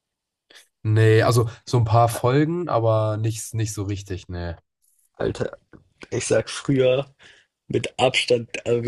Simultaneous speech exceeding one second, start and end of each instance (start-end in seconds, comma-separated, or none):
none